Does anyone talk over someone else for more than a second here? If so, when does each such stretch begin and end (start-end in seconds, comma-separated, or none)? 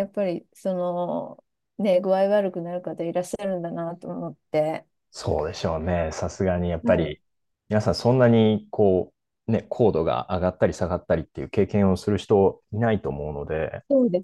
none